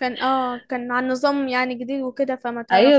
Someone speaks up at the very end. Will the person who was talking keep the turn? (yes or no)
no